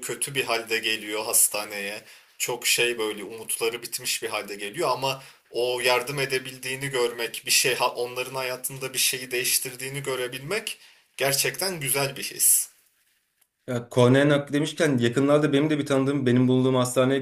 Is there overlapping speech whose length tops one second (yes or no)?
no